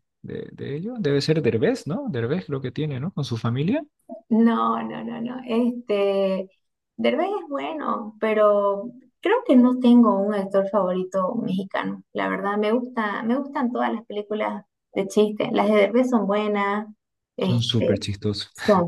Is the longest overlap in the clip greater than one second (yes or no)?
no